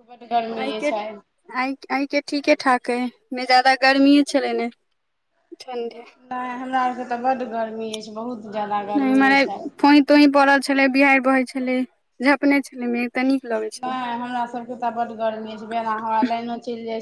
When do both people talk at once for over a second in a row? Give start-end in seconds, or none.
none